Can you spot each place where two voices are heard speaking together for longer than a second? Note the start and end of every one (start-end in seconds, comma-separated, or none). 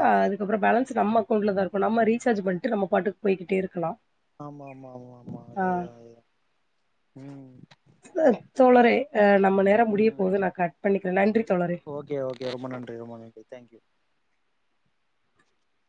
none